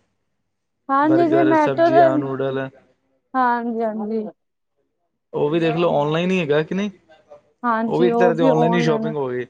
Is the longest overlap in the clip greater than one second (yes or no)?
yes